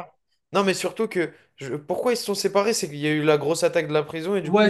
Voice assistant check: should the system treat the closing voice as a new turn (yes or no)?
yes